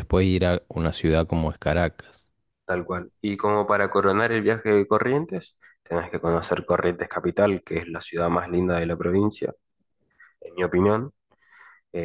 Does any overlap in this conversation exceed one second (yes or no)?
no